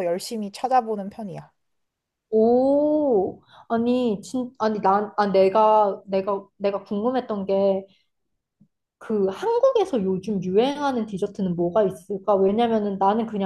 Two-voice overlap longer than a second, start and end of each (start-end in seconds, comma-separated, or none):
none